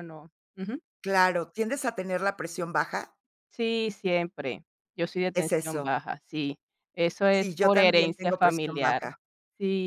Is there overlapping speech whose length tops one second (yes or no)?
yes